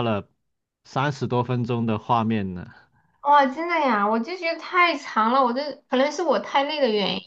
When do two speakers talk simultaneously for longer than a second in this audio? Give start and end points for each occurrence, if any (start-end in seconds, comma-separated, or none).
none